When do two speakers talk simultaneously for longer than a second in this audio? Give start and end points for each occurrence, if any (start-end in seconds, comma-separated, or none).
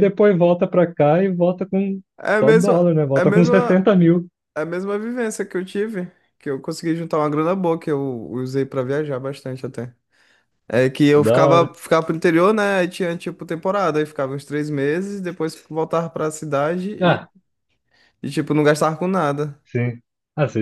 2.4-3.9